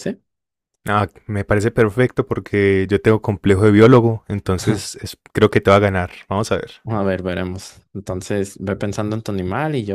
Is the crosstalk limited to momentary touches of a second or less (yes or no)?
yes